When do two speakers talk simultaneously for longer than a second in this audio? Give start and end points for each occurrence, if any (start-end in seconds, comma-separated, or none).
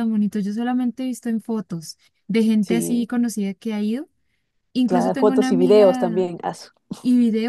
4.8-6.3